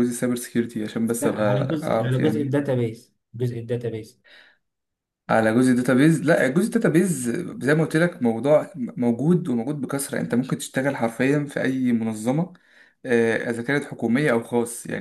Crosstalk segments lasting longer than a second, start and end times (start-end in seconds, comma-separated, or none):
1.2-2.6